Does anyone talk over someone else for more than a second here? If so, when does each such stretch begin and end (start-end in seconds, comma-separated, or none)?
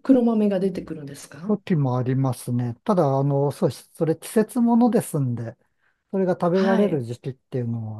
none